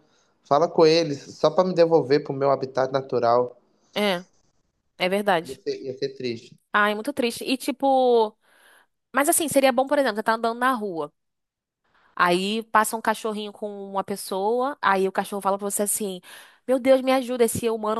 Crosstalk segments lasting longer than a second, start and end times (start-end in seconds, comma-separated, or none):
none